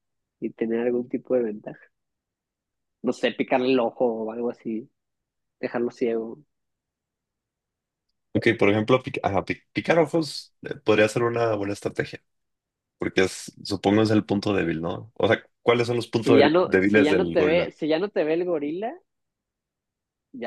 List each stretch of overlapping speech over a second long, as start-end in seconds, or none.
16.2-17.7